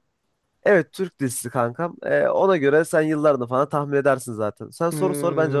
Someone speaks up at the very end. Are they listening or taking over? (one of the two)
taking over